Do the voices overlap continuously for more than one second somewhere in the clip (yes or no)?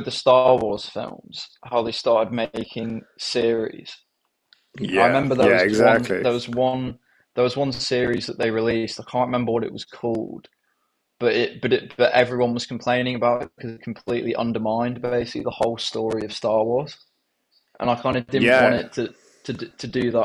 yes